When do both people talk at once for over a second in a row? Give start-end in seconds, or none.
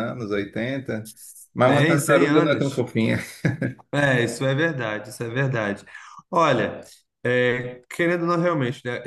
1.6-2.9